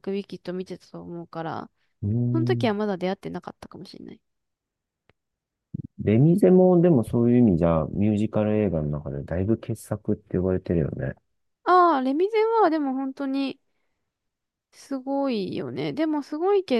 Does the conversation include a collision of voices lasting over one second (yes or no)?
no